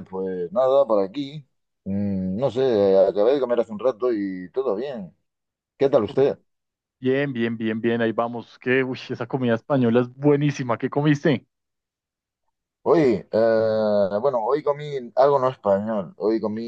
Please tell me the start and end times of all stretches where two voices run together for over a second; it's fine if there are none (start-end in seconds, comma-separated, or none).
none